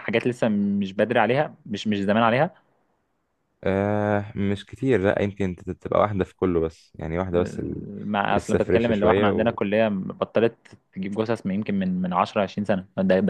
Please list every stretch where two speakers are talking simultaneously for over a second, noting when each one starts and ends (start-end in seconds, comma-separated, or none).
8.3-9.6